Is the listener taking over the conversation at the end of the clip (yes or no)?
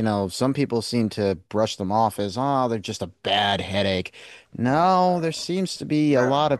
no